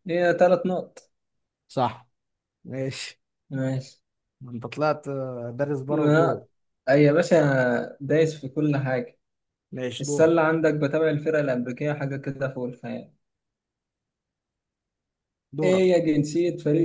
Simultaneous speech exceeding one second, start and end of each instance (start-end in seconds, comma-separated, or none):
none